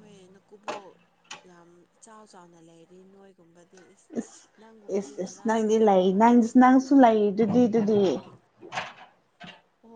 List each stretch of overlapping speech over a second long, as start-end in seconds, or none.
5.0-6.5